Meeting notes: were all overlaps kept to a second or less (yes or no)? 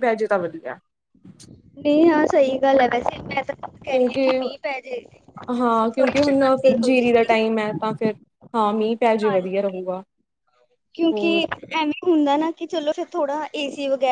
no